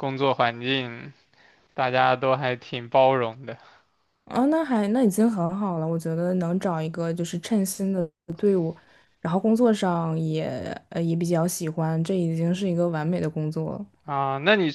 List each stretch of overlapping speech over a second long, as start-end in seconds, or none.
none